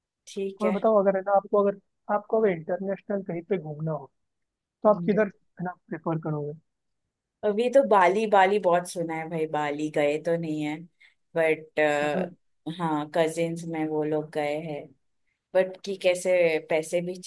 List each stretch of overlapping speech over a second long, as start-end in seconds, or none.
none